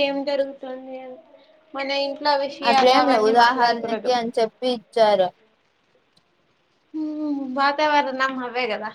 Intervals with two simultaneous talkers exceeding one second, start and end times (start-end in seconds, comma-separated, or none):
2.7-4.1